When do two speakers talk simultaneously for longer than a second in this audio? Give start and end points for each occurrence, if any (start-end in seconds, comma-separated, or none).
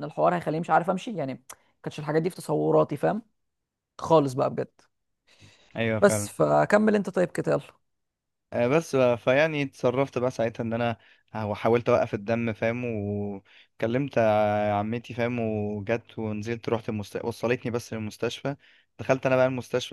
none